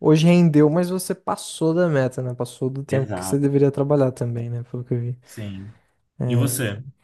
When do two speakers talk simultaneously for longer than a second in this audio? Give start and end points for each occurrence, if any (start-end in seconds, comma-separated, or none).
none